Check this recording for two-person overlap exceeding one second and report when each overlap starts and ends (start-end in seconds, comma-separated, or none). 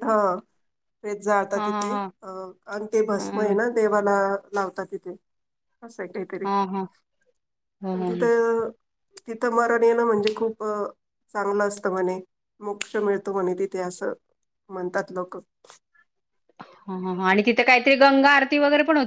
none